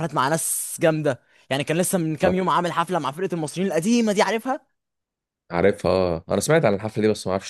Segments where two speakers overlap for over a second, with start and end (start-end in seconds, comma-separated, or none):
none